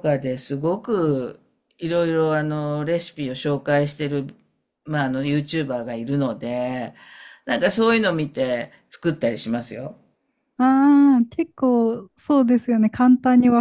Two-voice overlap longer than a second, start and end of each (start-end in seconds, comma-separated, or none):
none